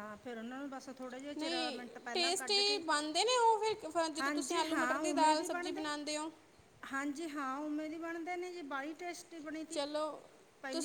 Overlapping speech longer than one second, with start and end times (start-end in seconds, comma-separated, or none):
4.2-5.8